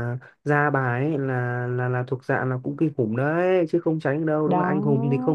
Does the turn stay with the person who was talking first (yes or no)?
yes